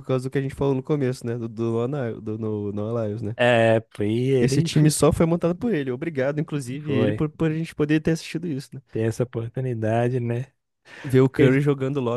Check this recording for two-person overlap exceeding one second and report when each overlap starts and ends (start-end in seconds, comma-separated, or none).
none